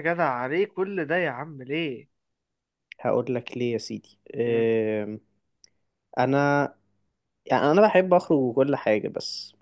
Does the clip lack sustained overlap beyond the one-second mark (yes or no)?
yes